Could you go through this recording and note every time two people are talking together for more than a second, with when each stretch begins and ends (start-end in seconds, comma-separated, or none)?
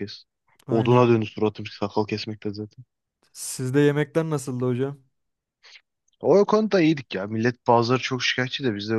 none